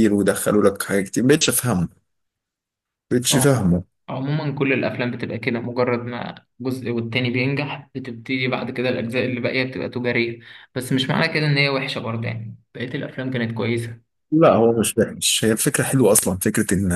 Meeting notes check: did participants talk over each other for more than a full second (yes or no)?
no